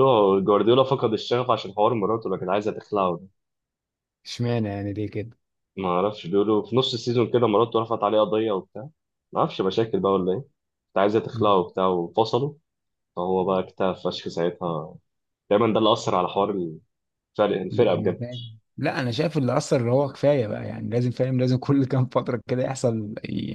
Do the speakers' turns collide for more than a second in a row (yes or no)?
no